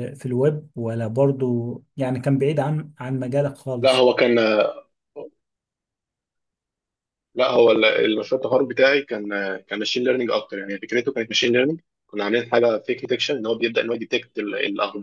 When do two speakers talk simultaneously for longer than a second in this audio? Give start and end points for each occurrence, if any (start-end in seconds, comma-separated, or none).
none